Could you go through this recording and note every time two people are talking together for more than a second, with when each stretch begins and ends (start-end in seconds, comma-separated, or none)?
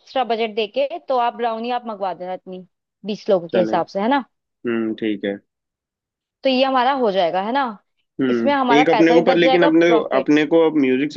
8.3-10.3